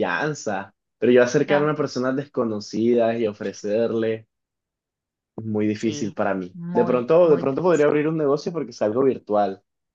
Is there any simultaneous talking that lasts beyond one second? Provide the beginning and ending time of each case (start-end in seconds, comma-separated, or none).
5.7-7.9